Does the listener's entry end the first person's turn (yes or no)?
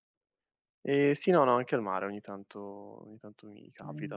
no